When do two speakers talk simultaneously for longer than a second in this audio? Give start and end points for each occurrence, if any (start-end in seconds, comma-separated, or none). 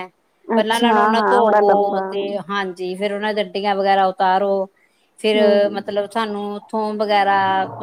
0.6-2.4